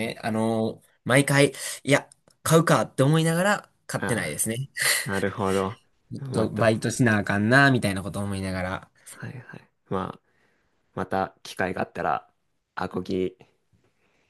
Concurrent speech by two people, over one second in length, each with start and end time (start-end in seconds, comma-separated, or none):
none